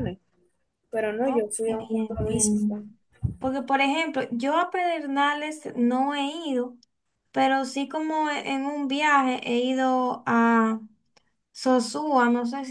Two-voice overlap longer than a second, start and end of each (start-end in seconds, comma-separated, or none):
1.2-2.8